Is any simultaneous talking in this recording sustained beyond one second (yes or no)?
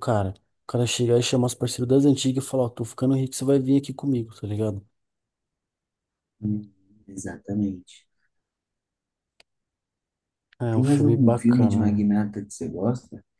yes